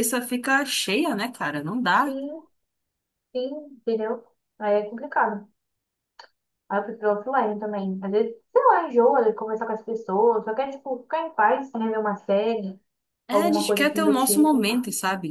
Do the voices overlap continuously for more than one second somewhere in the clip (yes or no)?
yes